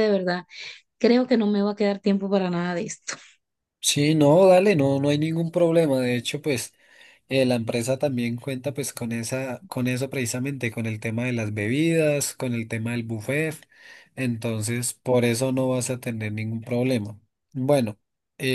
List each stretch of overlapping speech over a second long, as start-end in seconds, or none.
none